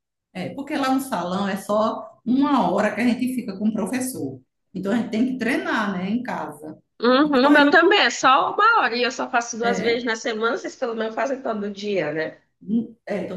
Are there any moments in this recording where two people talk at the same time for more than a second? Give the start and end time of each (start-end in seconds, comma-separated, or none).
none